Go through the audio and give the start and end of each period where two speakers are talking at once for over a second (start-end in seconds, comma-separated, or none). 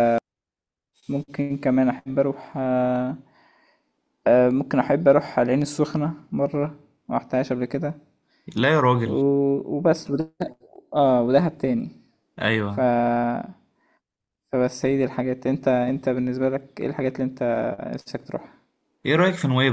none